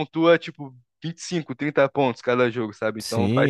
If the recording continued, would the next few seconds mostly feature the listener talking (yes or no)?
yes